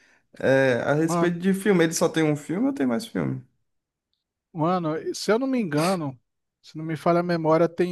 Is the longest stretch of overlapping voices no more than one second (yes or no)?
yes